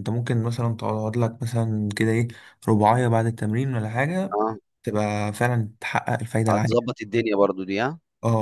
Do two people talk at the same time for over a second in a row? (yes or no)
no